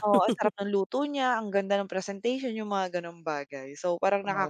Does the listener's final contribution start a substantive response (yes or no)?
yes